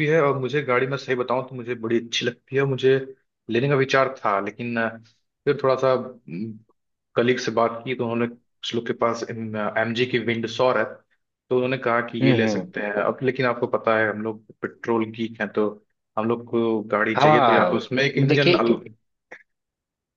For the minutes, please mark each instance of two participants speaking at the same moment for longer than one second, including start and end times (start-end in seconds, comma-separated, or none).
17.1-18.8